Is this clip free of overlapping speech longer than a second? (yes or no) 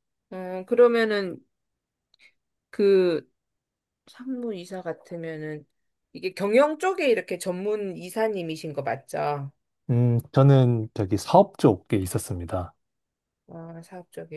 yes